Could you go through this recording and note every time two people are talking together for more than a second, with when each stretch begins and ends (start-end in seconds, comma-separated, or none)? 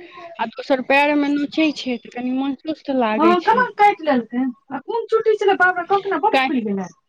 none